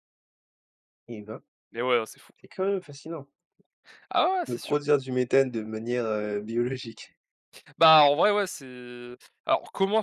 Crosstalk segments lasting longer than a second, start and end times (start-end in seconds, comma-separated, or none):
none